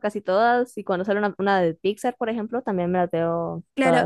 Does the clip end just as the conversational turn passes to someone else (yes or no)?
yes